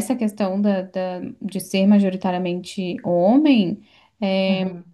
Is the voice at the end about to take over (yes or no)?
no